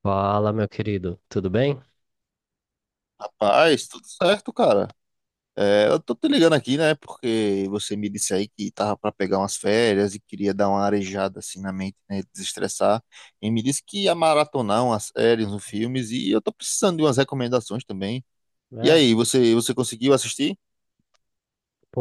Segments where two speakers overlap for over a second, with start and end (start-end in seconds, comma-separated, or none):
none